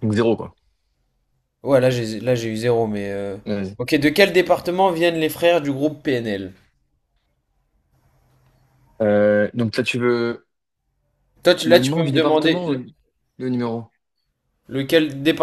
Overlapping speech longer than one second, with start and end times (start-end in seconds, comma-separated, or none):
11.6-12.8